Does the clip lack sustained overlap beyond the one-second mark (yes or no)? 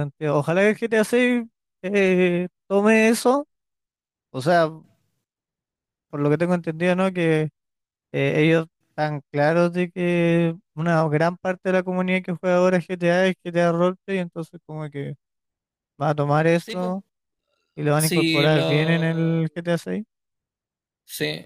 no